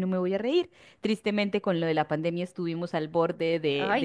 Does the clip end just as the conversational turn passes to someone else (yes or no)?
no